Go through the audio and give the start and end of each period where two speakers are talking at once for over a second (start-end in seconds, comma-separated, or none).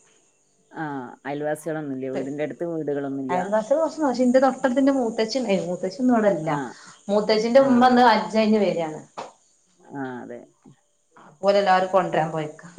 none